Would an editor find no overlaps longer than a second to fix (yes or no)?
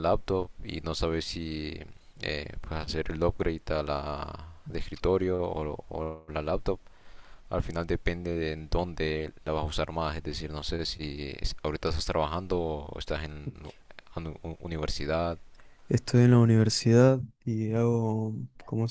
yes